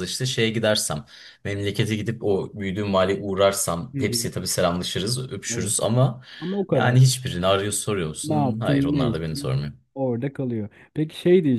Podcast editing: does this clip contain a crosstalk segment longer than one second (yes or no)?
yes